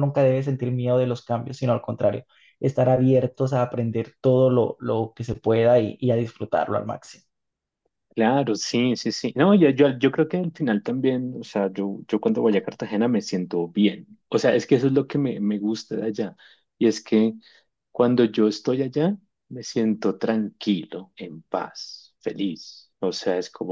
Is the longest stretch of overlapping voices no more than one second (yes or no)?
yes